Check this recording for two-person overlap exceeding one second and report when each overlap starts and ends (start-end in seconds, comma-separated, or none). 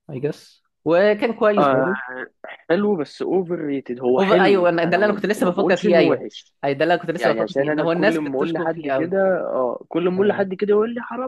4.2-6.2, 7.2-8.9